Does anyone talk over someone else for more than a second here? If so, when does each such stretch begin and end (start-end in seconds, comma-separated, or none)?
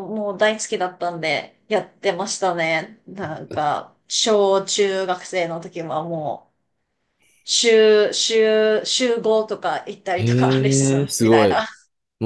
10.1-11.7